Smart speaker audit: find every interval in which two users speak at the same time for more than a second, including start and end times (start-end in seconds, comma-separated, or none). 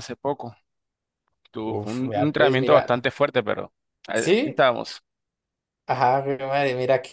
1.6-3.0